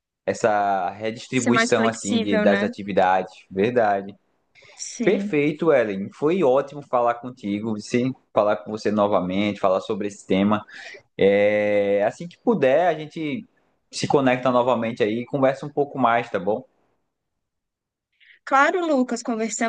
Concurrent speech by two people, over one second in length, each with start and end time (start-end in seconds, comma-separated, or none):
1.3-2.7